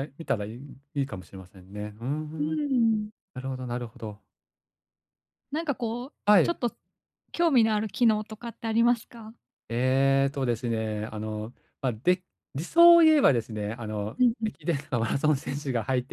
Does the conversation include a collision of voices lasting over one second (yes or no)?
no